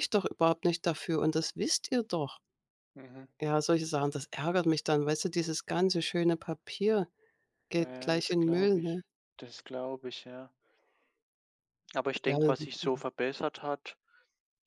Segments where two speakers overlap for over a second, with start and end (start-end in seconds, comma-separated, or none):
7.8-9.0